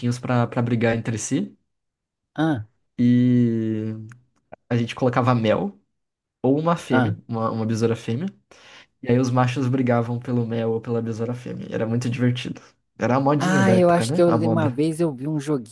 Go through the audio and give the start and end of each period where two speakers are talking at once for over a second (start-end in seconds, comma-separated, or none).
13.4-14.8